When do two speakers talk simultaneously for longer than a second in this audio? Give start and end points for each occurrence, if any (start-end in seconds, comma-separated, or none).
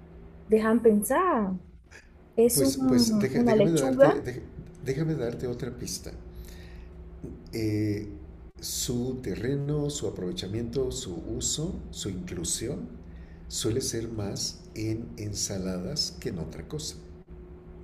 2.5-4.2